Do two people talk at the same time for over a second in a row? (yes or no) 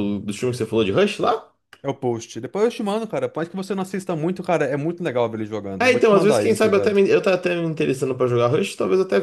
yes